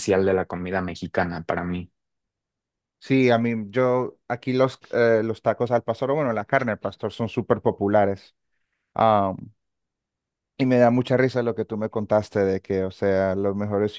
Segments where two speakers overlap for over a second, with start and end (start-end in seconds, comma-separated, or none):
none